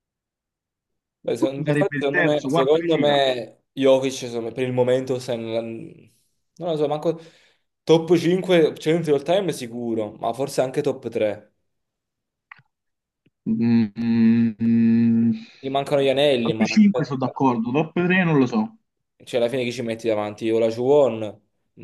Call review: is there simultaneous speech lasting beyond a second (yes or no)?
yes